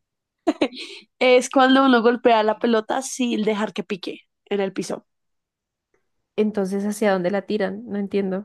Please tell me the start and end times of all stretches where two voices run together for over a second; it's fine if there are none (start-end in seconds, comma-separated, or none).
none